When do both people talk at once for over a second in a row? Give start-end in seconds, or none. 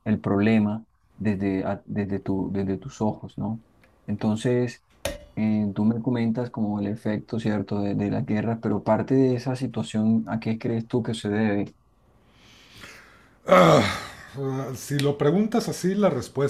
none